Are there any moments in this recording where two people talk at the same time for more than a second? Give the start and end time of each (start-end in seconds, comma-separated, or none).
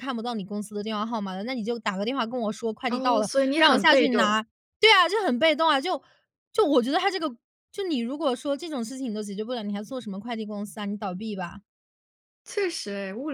2.9-4.4